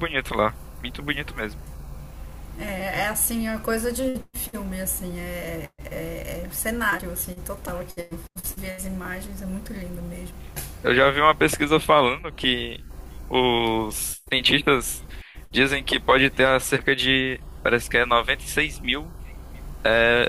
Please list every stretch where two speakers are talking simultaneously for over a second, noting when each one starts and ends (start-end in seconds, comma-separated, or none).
none